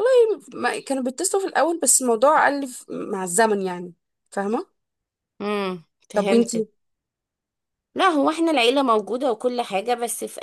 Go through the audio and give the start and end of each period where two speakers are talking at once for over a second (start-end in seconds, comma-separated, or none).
none